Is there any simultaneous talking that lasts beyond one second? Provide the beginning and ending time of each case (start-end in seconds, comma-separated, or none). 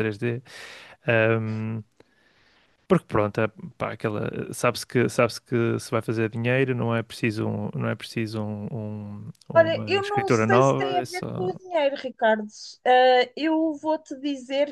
9.5-11.5